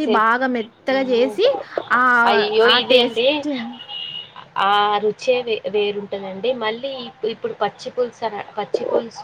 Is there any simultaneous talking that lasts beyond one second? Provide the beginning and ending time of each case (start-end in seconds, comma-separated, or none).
none